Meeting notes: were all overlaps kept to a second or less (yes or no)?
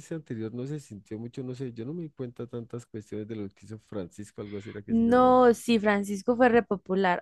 yes